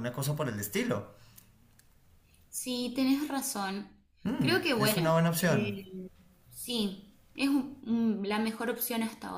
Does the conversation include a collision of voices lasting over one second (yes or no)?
yes